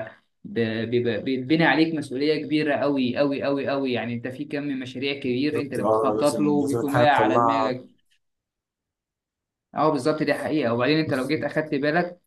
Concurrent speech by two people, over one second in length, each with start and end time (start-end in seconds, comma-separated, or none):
5.5-7.7